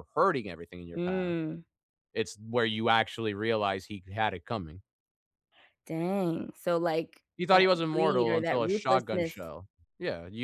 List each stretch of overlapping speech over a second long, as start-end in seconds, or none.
7.4-9.3